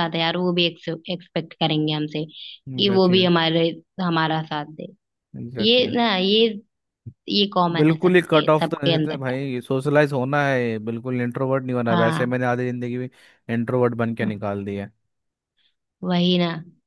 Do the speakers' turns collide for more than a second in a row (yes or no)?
yes